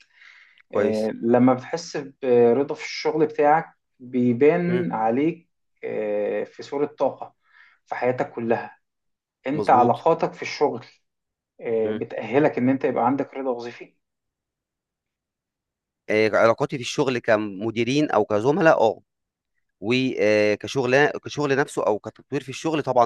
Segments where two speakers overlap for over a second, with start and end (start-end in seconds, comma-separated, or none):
none